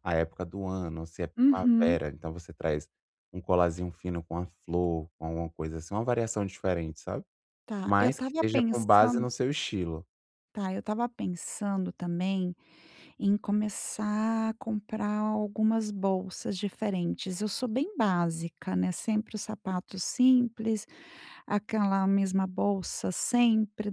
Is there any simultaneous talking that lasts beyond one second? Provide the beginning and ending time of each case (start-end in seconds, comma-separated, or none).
7.8-9.2